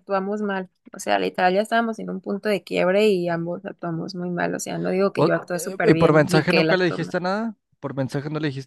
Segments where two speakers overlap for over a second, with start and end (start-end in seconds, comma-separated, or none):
5.1-7.2